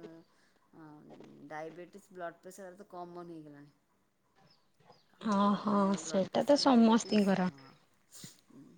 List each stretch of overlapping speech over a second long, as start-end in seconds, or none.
5.6-7.5